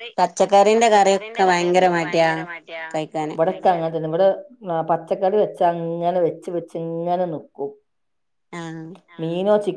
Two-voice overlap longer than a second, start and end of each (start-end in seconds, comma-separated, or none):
0.8-2.3